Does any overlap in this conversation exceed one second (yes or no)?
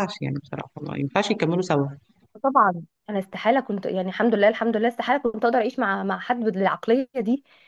no